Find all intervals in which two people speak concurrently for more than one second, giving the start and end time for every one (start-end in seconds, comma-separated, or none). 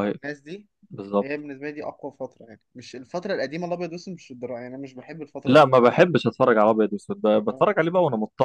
none